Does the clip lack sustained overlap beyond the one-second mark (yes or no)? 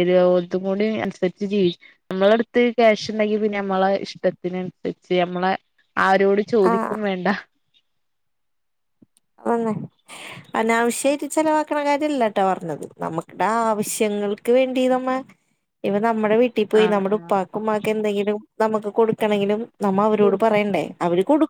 yes